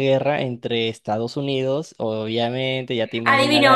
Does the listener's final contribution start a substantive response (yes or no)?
yes